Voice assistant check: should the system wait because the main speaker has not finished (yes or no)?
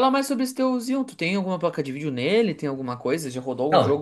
no